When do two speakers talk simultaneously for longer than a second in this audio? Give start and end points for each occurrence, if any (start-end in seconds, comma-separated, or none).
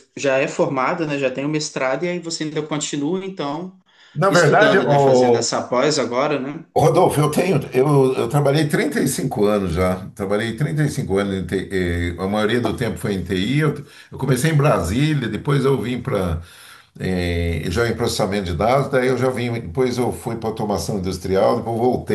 4.3-5.5